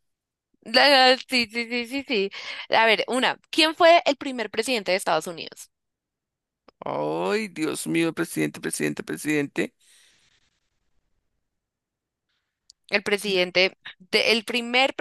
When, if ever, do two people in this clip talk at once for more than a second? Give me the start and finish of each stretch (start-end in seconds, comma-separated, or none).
none